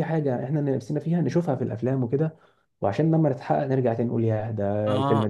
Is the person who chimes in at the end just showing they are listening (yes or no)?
no